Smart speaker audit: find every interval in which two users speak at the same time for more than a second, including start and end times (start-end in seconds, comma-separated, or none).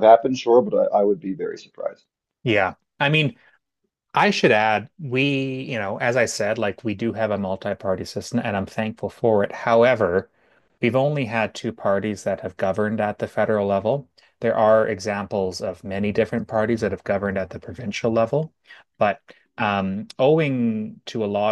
none